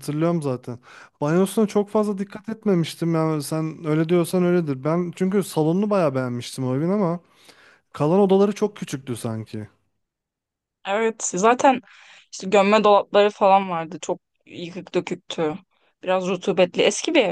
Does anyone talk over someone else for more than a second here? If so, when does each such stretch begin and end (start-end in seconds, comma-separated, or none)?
none